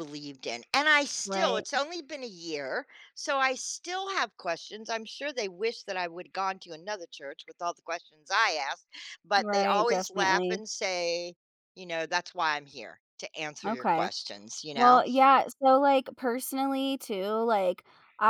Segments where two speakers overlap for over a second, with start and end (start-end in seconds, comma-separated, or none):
9.4-10.6